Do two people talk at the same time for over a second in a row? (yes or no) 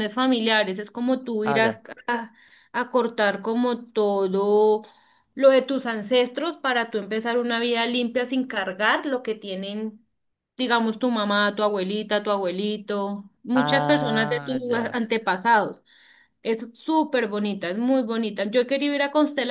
yes